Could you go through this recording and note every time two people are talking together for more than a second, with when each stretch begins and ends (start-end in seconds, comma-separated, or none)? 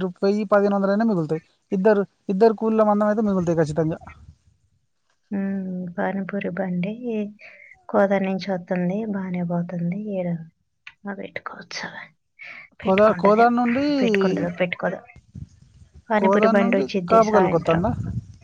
16.2-17.8